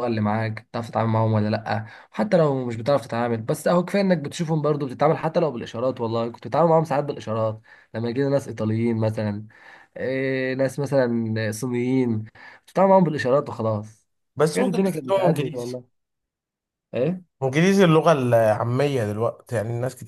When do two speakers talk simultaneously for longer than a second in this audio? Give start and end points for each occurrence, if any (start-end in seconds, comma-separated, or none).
14.3-15.8